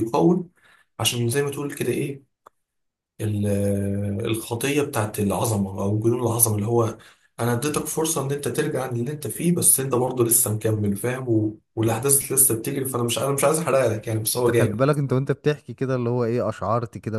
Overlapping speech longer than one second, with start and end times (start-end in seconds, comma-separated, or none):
none